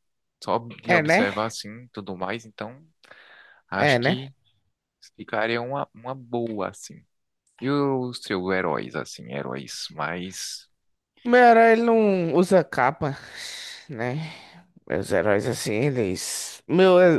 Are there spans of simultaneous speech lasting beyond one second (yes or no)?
no